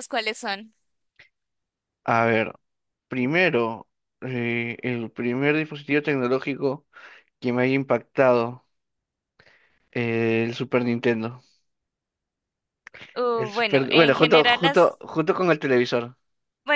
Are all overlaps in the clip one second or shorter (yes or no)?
no